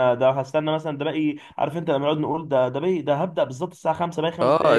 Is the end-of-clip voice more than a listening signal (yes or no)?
yes